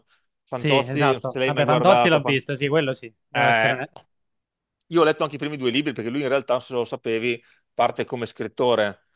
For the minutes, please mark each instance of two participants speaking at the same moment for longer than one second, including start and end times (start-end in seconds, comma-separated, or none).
0.5-2.4